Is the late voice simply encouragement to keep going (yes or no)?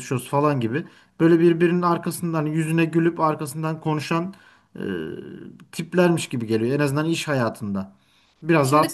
yes